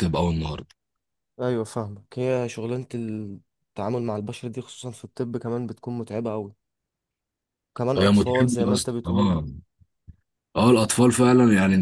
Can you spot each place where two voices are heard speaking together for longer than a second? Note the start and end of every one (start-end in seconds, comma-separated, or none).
8.0-9.3